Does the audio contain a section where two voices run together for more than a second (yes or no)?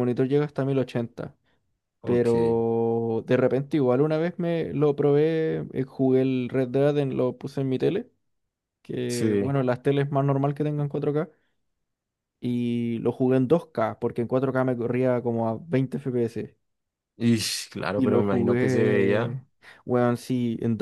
yes